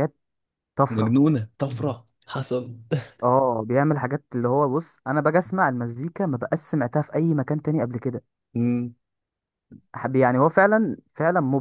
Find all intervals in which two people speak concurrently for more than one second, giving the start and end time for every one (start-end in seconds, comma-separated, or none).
none